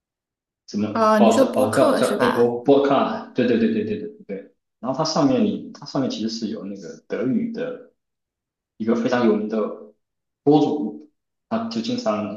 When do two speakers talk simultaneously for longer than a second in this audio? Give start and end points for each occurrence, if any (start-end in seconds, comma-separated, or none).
0.9-2.5